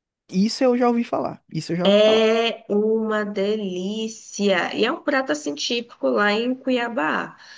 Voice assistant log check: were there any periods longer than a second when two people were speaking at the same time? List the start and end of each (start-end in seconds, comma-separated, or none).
none